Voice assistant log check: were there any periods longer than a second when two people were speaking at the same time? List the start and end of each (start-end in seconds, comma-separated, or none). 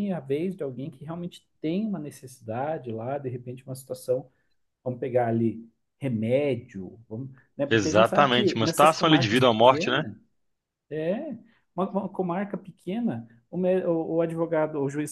7.7-10.0